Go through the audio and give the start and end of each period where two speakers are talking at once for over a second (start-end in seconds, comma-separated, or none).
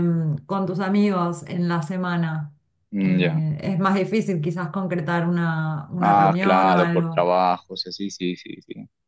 6.0-7.3